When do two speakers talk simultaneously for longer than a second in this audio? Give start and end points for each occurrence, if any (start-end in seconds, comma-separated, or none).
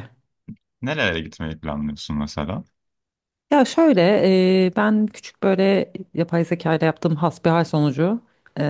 none